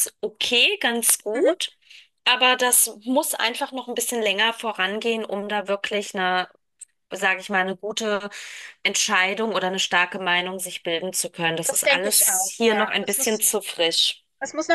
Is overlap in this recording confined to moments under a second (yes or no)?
no